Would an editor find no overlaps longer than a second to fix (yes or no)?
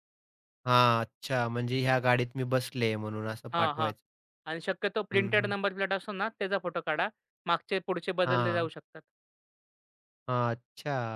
yes